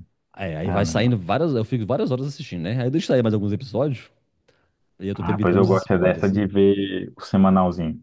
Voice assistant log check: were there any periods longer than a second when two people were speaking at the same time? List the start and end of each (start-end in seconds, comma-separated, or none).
5.1-6.4